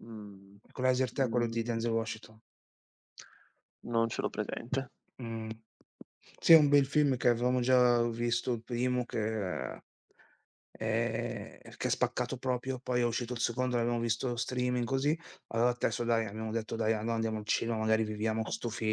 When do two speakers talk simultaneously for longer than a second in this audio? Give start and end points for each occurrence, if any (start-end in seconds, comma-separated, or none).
none